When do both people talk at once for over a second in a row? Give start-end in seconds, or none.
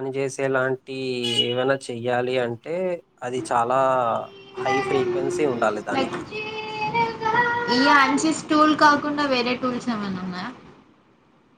none